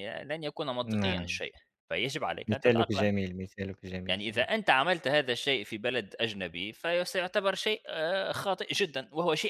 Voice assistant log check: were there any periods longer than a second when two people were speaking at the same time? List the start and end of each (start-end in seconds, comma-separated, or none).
none